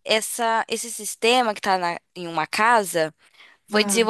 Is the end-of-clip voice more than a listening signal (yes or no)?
no